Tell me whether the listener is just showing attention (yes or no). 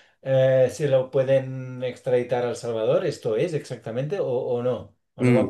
no